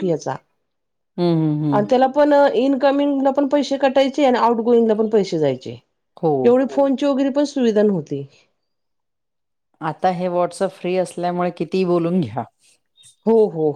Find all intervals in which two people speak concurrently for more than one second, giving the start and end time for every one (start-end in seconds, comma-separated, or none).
none